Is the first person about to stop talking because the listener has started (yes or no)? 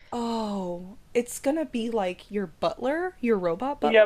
yes